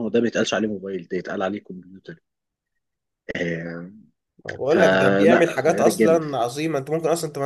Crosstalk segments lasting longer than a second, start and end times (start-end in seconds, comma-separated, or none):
4.7-6.2